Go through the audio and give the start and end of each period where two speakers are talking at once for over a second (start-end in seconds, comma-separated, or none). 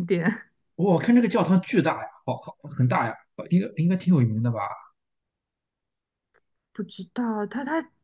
none